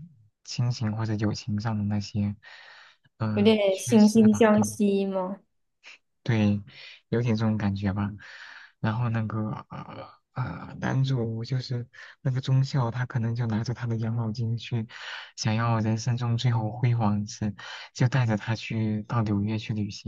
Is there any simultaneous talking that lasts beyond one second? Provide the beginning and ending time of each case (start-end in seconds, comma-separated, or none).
3.3-4.8